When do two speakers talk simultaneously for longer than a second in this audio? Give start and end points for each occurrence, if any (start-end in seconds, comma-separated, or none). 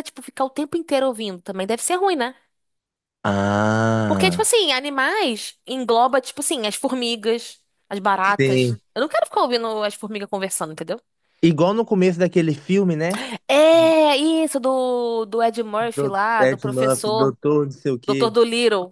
15.9-17.4